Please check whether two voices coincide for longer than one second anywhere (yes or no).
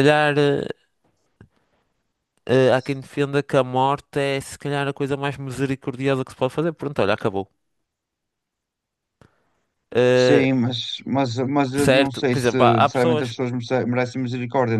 yes